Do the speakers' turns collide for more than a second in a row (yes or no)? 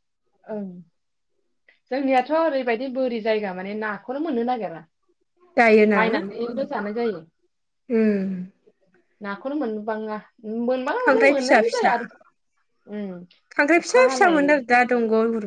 no